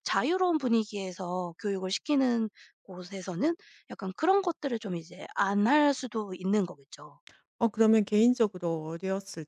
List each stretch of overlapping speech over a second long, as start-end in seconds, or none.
none